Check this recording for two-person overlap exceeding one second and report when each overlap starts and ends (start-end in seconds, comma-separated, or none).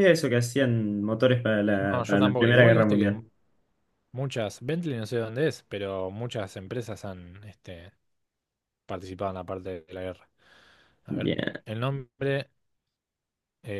1.8-3.2